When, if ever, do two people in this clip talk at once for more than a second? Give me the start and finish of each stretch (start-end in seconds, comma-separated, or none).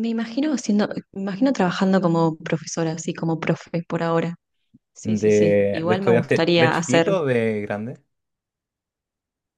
5.0-7.2